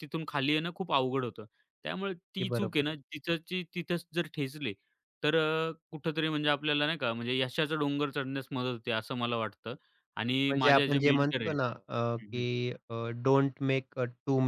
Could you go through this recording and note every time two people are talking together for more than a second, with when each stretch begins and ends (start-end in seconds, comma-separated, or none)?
10.3-11.6